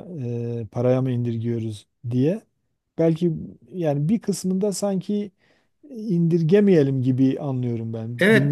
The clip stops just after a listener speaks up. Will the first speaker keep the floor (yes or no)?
no